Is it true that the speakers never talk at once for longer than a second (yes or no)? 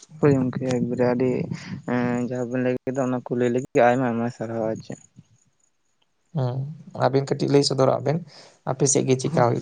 yes